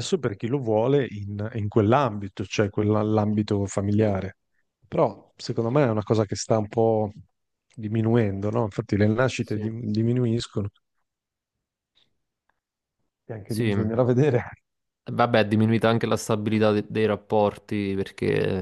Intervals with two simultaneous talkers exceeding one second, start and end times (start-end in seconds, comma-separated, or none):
none